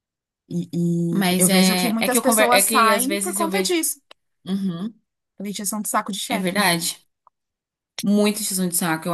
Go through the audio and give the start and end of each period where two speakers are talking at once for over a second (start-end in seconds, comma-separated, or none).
1.1-3.8